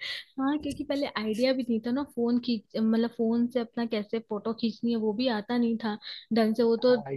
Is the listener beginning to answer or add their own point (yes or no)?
no